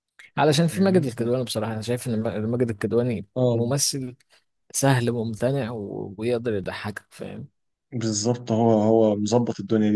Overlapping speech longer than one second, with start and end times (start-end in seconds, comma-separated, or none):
none